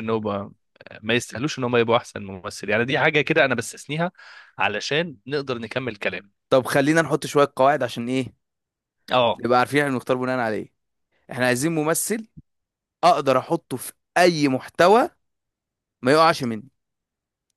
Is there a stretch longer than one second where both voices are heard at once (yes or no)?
no